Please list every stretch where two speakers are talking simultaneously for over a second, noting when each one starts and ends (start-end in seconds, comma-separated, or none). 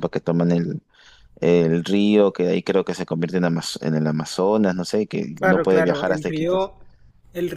5.4-6.7